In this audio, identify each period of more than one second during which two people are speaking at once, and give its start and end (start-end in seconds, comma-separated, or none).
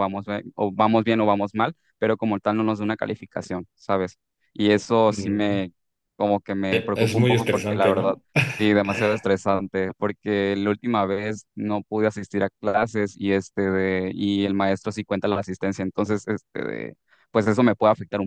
6.7-8.2